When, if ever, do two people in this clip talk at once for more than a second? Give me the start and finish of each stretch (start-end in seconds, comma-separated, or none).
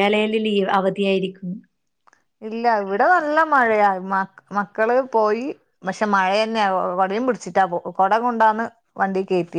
none